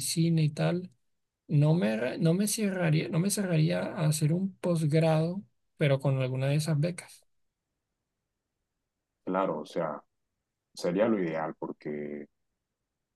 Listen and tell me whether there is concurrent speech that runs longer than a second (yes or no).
no